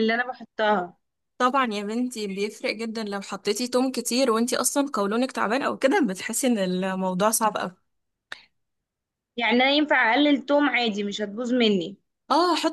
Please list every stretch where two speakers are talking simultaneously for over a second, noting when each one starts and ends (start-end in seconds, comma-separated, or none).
none